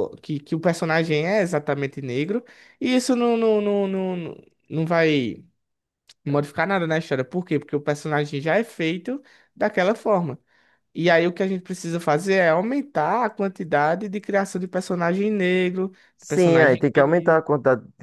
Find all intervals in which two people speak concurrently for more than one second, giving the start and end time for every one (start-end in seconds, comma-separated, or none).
16.2-17.4